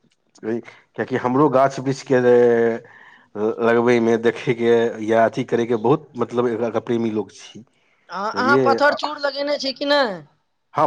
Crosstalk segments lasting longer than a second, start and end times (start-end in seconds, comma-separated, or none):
none